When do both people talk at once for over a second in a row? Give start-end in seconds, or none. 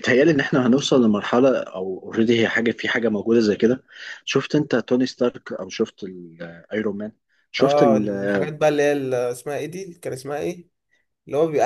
none